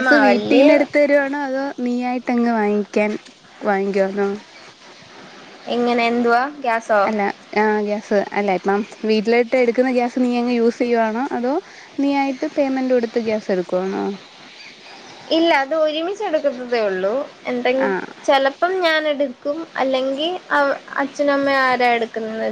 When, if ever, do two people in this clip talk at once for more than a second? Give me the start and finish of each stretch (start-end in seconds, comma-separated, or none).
none